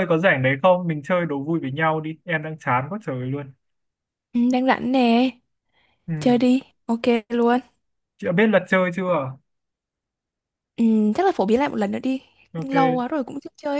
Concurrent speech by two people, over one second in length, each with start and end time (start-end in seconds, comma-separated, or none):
none